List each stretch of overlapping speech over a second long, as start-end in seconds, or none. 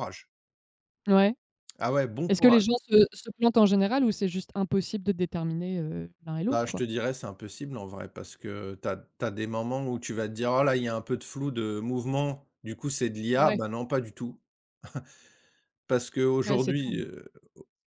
none